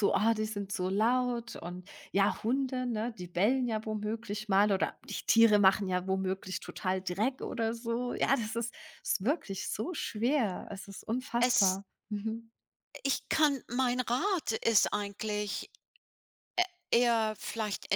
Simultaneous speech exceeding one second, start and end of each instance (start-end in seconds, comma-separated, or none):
none